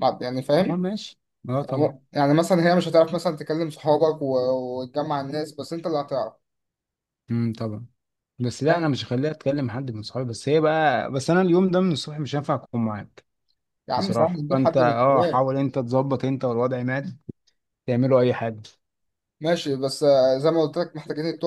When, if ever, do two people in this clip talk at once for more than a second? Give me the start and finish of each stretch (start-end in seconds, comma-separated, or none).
13.9-15.4